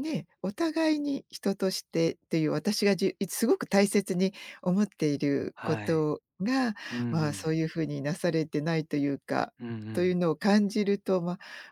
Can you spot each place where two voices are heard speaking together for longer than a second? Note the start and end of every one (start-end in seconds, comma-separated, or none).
none